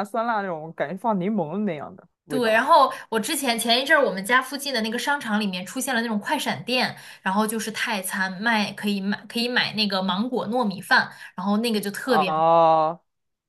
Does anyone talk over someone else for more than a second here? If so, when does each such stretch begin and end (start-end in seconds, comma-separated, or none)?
none